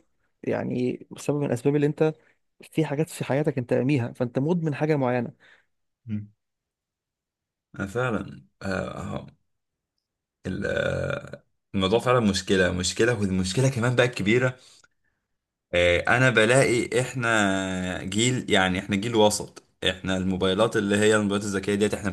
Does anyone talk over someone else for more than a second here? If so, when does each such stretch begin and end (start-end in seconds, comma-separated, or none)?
none